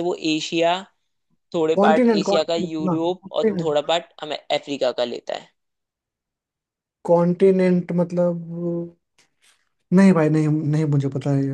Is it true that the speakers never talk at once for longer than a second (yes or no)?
no